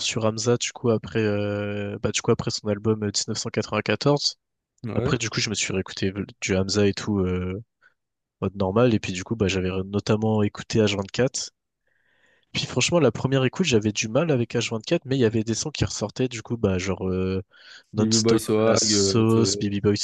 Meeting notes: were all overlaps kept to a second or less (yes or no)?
no